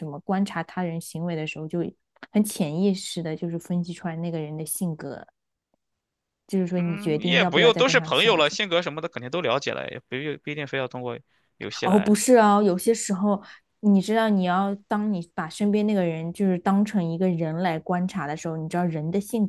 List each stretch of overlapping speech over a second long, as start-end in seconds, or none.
6.8-8.6